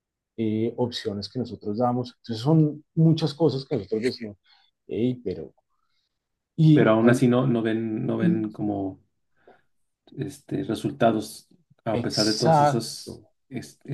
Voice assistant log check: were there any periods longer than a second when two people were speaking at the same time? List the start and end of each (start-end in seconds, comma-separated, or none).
11.9-13.1